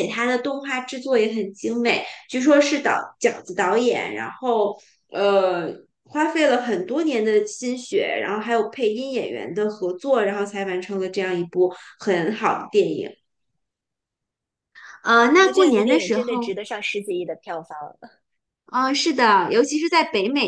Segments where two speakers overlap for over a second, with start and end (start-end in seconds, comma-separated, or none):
15.1-16.5